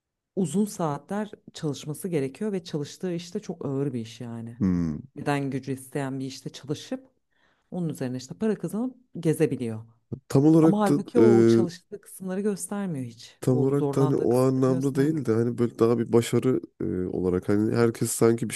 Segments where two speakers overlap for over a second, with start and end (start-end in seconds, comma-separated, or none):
13.4-15.2